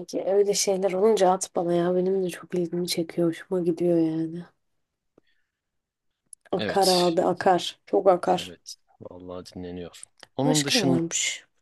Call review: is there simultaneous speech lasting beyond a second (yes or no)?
no